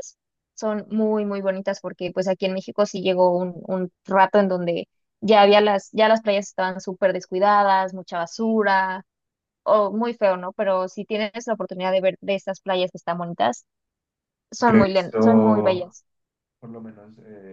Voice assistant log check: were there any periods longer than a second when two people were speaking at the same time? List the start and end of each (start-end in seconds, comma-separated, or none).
14.6-15.9